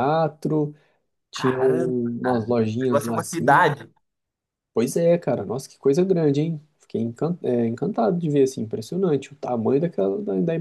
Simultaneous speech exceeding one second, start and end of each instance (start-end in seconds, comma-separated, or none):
1.3-3.7